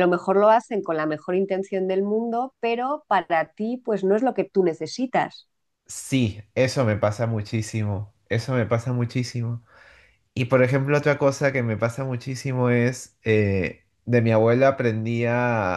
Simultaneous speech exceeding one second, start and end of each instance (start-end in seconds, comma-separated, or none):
none